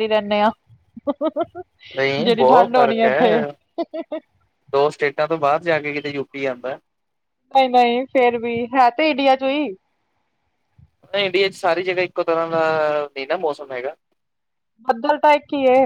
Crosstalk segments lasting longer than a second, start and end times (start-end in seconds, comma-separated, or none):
2.2-3.4